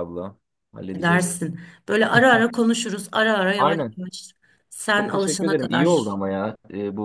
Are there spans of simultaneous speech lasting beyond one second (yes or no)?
yes